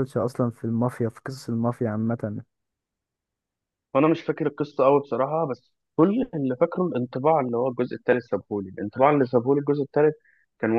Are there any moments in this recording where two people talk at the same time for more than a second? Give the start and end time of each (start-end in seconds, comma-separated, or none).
none